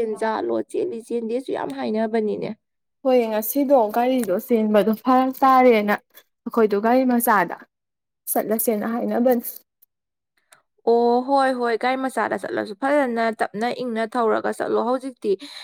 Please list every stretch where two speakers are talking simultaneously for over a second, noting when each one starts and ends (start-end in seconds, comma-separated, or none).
none